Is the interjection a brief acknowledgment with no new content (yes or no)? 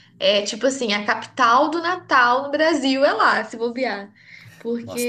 no